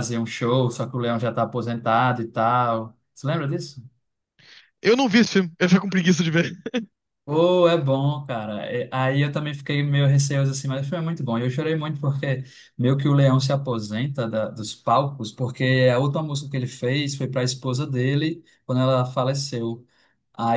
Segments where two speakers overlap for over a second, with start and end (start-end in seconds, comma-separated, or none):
none